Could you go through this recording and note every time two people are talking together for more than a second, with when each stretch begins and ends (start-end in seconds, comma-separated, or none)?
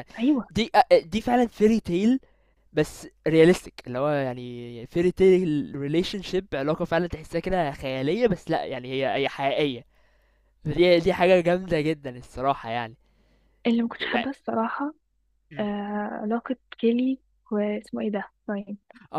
none